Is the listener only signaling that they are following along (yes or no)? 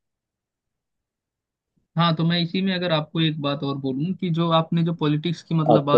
yes